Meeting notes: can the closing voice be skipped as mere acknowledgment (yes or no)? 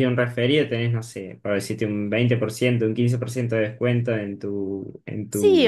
no